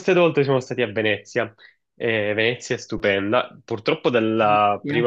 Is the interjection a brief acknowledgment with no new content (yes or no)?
yes